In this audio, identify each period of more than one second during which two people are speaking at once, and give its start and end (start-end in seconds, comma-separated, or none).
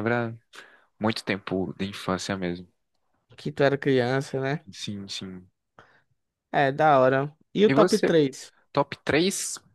none